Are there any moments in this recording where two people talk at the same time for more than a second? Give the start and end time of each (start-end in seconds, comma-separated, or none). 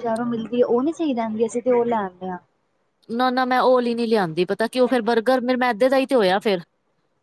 none